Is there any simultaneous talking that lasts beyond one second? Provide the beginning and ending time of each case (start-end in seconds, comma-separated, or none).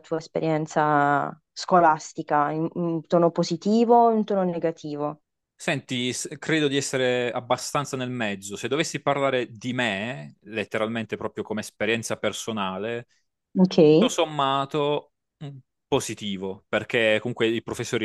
none